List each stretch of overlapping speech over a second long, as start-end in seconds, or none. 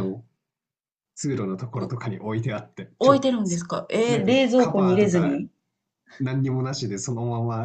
4.1-5.4